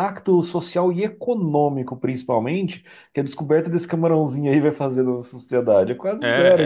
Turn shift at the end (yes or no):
yes